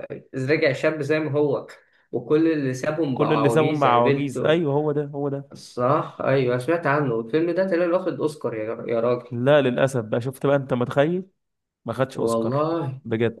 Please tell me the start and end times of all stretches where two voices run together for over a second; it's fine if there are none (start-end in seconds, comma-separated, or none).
3.1-4.6